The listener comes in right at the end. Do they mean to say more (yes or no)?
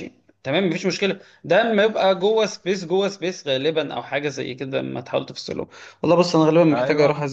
no